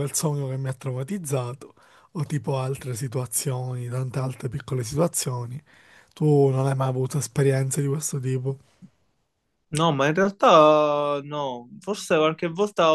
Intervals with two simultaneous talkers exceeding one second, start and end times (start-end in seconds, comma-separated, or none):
none